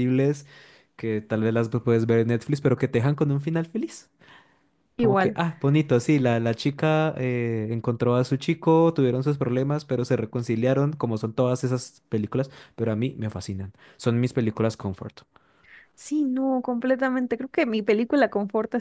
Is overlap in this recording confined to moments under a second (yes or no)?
yes